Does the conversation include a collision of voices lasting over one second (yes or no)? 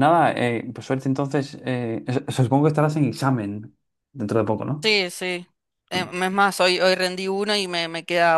no